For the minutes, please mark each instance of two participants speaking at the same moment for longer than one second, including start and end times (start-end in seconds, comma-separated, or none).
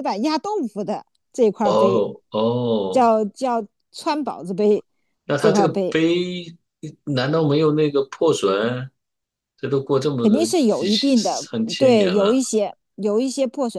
10.2-12.4